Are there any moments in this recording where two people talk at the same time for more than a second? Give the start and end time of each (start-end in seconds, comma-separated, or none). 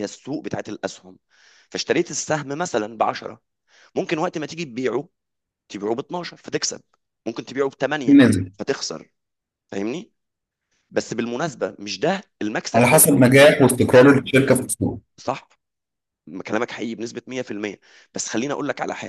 none